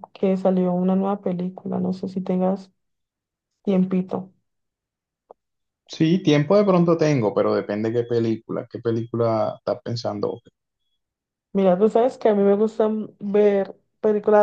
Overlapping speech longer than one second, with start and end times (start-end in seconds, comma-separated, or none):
none